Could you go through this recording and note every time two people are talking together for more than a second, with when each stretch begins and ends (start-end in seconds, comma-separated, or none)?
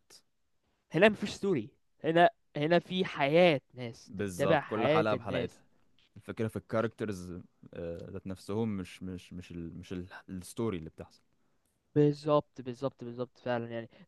4.1-5.6